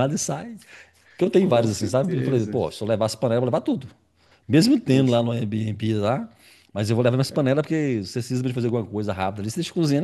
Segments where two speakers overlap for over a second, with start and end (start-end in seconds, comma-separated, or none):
1.4-2.6